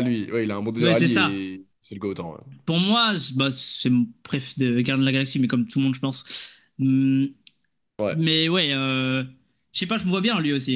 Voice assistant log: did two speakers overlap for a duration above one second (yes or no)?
no